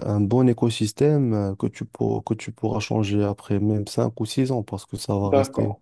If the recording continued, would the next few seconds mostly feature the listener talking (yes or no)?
yes